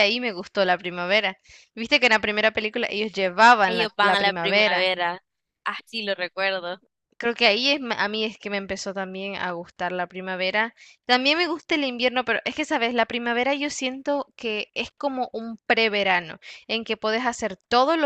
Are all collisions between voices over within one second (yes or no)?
no